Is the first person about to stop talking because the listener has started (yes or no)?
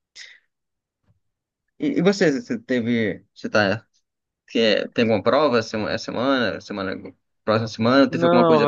yes